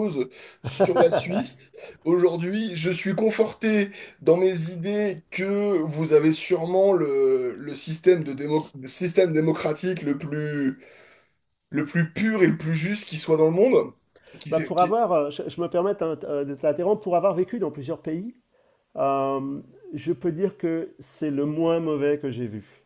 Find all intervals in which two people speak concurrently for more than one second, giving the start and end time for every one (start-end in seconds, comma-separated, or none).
none